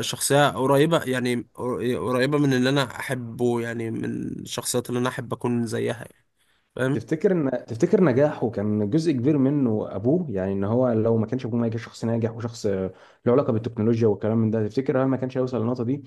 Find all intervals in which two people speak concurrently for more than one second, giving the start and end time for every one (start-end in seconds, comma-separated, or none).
none